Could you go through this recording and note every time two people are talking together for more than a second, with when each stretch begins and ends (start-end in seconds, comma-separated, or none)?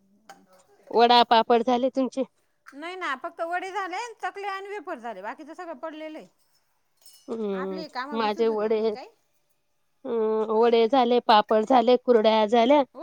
none